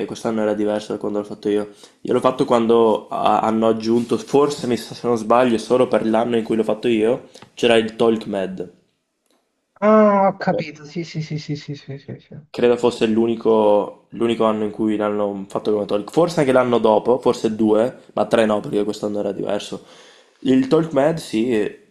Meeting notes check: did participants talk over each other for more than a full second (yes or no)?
no